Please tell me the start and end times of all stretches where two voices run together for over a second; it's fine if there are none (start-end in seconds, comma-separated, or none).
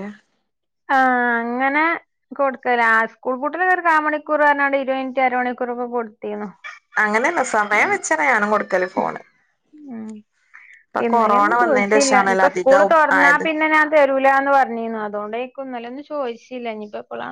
11.1-13.4